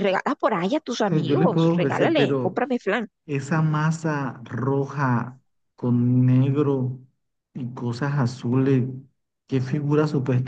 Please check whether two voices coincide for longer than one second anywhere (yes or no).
yes